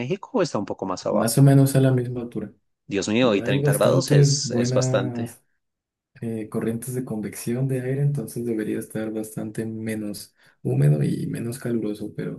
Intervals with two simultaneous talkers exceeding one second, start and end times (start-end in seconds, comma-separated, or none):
3.2-5.3